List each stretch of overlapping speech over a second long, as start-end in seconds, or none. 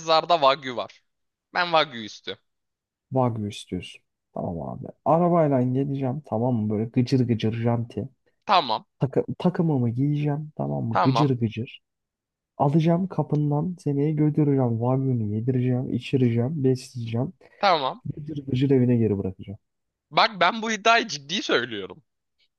none